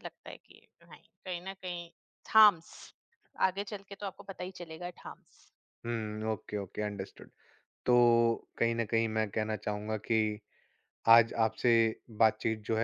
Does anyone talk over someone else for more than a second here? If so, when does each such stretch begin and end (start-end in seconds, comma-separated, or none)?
none